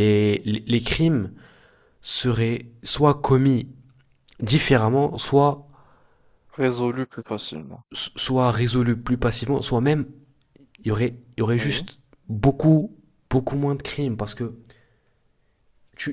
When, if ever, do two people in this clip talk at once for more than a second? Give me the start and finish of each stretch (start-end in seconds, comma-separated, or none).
none